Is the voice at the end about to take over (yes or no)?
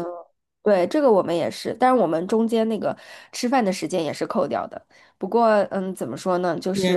yes